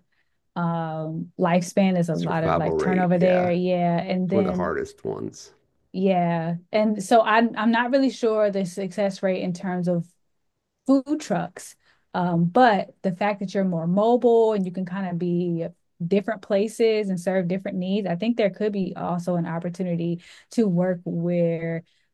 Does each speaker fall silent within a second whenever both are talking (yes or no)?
no